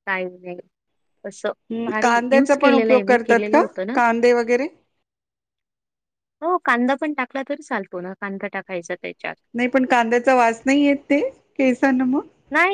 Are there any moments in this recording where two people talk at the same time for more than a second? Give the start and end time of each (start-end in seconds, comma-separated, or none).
1.7-4.0